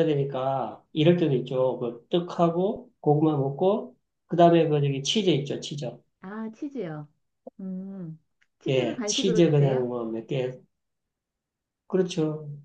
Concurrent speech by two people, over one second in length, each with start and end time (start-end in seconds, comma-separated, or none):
8.7-9.9